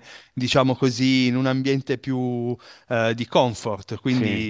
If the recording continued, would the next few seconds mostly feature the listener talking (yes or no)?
no